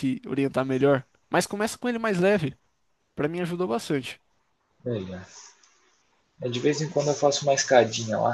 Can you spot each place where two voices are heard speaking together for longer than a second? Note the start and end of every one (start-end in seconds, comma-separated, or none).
none